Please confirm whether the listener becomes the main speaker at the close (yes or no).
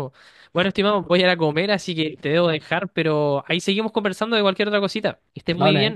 yes